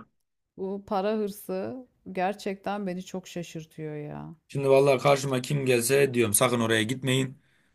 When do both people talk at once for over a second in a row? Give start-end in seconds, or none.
none